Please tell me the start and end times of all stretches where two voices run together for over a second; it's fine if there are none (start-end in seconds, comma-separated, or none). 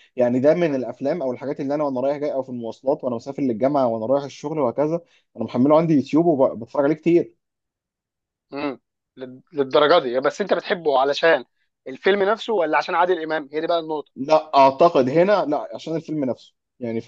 none